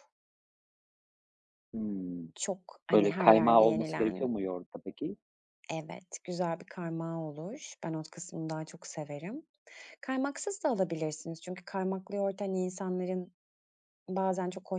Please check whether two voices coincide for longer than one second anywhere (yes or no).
yes